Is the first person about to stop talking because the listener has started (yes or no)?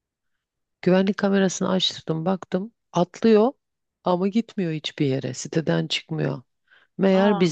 no